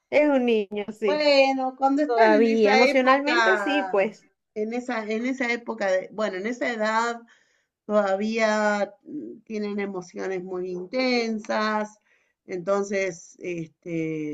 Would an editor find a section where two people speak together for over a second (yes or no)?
yes